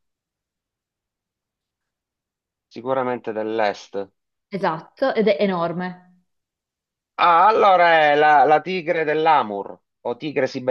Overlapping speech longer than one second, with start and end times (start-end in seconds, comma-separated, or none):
none